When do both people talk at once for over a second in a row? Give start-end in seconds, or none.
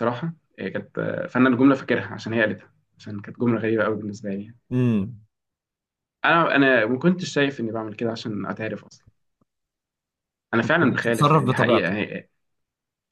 10.6-12.0